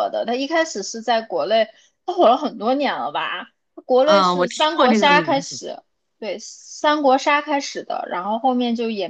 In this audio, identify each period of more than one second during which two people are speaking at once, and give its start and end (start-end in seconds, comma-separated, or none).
4.0-5.6